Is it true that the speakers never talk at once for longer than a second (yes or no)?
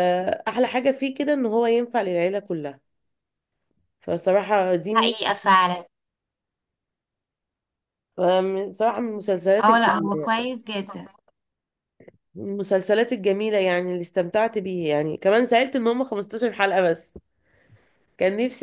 yes